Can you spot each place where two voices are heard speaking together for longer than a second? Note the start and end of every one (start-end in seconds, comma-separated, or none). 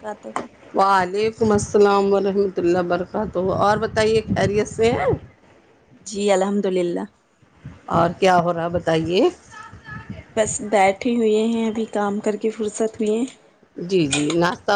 none